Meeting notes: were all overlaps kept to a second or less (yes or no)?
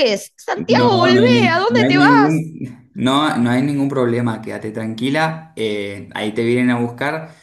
no